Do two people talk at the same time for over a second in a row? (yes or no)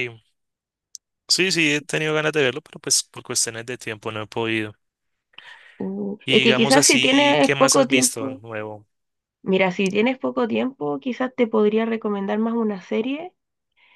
yes